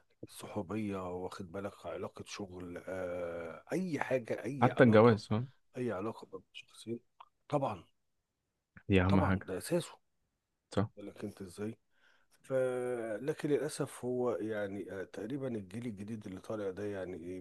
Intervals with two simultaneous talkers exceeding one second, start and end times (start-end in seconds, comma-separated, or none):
none